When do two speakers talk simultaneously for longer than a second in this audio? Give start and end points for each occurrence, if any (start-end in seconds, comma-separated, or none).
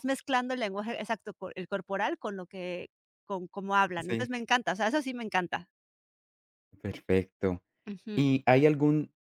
none